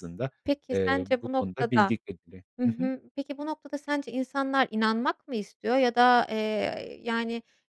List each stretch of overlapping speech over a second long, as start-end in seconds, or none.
0.7-1.9